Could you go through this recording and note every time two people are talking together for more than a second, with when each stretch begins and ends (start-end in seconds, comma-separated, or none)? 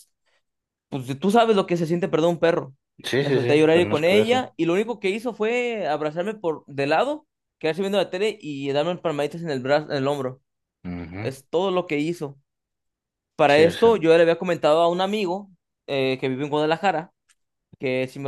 3.2-4.5